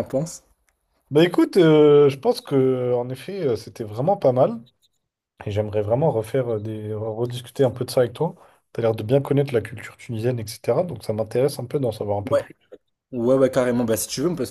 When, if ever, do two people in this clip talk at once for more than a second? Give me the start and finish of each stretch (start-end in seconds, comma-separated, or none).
none